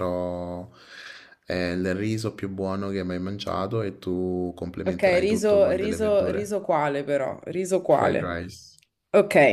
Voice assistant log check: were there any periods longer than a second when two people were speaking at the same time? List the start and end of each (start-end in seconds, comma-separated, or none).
4.8-6.6